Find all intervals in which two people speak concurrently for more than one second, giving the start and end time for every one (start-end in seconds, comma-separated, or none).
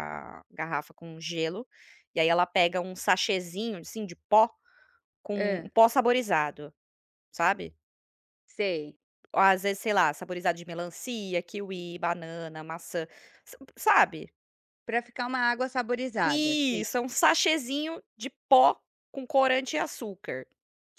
none